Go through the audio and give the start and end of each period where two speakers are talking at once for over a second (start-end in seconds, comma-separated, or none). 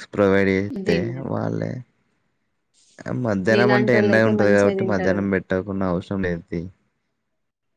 3.5-5.2